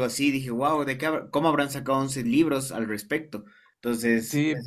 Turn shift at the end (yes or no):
yes